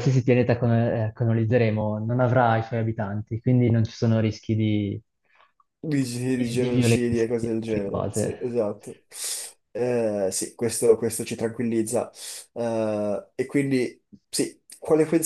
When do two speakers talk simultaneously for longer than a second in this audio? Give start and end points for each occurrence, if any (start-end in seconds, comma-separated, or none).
6.3-8.4